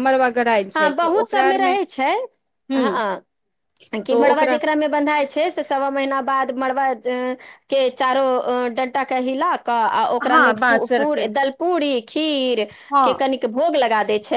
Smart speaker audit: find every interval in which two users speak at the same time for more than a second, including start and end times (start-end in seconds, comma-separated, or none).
none